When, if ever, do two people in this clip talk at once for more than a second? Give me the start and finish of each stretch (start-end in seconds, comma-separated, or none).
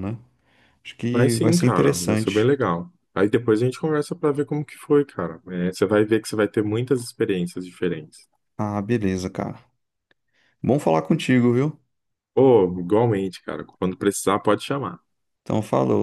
1.1-2.5